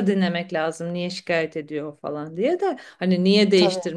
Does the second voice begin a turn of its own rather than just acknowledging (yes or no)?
no